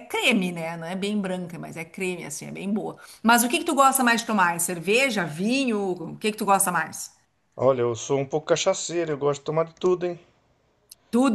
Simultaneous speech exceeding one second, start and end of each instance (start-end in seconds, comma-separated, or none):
none